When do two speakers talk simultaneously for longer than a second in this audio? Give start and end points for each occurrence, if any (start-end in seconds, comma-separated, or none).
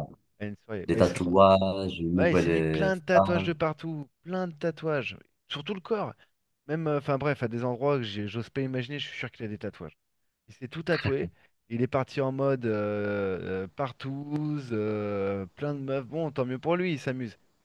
2.2-3.5